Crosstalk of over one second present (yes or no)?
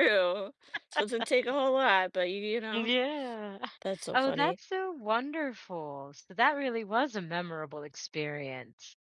no